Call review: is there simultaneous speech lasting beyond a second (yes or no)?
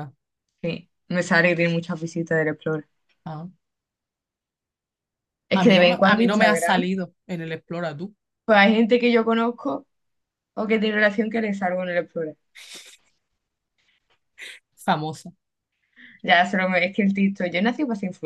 yes